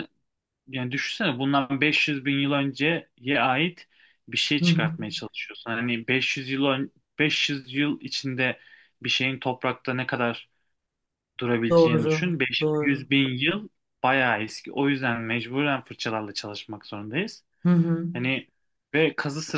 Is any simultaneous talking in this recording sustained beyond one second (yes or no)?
yes